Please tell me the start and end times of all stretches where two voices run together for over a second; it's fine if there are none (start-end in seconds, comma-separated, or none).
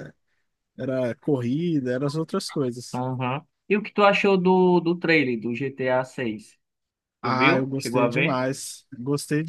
7.2-8.4